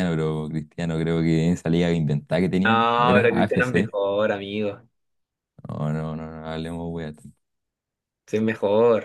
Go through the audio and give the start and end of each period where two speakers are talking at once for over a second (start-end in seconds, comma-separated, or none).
2.6-3.9